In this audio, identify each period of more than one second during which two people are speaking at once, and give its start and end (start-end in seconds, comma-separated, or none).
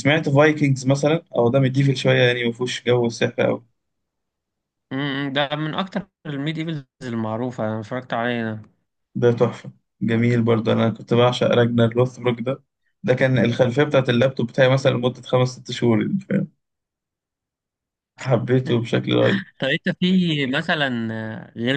none